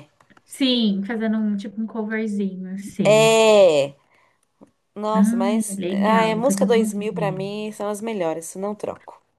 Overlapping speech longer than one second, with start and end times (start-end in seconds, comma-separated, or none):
5.1-7.5